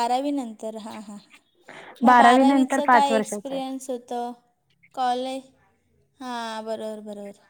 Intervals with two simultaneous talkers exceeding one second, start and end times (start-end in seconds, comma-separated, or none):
2.1-3.6